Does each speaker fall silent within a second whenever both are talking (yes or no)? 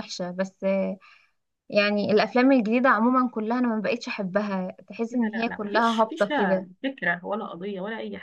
no